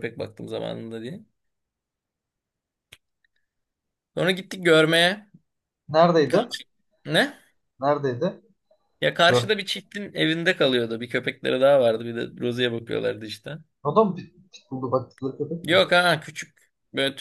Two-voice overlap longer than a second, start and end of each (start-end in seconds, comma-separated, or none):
none